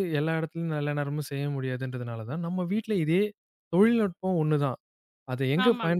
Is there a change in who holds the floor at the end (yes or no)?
no